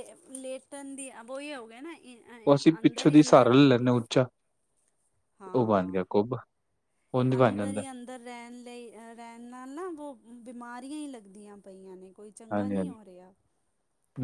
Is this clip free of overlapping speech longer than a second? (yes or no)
yes